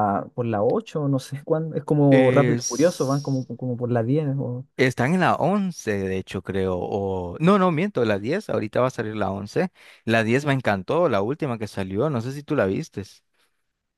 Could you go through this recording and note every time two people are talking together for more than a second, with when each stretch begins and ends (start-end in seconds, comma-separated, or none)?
2.1-3.5